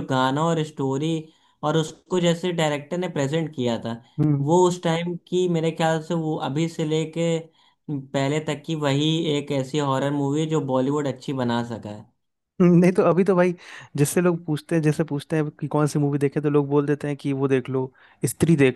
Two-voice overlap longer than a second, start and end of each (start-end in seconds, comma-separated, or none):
none